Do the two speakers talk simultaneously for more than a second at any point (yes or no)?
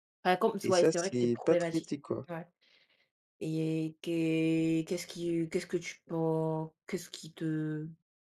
yes